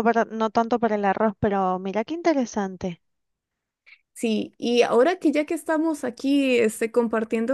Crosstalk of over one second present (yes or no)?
no